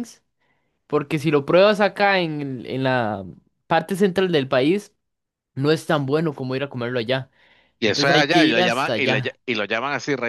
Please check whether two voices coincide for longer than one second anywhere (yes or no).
yes